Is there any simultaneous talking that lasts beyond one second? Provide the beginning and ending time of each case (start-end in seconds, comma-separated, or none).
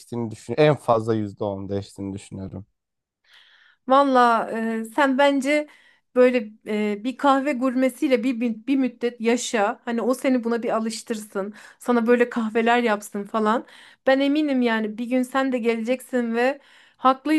none